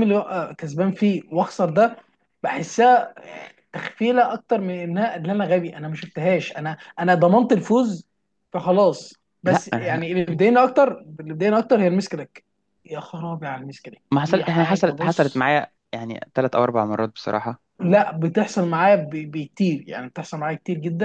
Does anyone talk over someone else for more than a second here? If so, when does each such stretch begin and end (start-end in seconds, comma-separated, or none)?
14.1-15.5